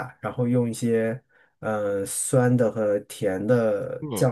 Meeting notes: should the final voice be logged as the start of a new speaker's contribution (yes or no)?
no